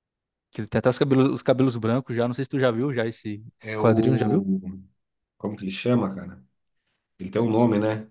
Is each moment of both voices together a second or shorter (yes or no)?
yes